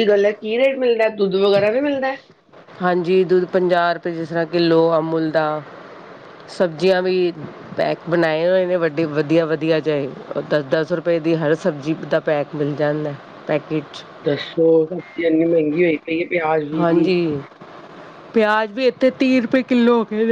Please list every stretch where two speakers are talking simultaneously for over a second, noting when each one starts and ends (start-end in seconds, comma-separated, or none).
none